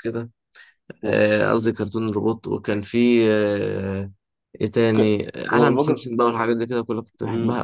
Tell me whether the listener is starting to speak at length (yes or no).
yes